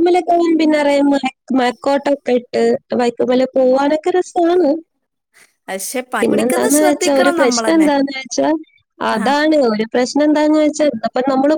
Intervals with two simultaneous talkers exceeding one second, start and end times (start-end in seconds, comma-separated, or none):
6.2-7.9